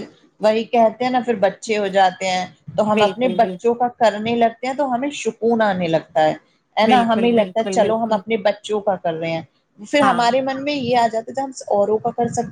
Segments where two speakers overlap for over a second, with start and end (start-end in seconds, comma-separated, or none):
6.8-8.2